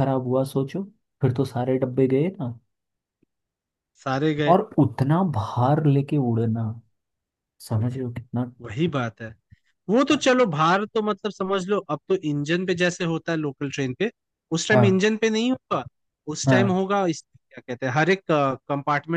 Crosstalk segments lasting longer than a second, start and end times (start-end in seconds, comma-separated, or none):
none